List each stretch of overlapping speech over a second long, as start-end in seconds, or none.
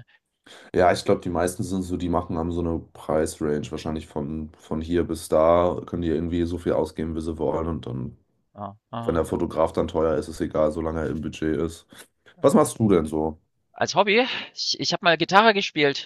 none